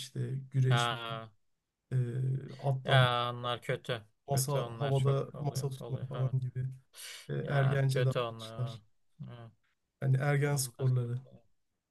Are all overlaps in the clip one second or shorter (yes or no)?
no